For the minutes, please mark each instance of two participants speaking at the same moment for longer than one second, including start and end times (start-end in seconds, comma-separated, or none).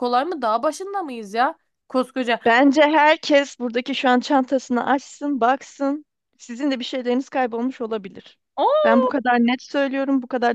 none